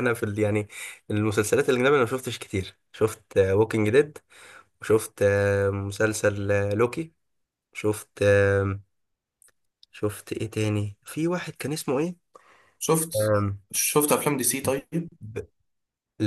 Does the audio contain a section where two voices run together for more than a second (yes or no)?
no